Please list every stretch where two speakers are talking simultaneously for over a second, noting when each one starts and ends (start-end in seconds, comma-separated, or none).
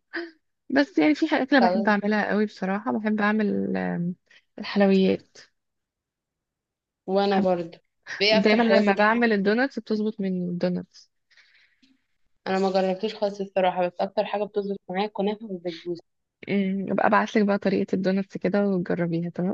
8.3-9.6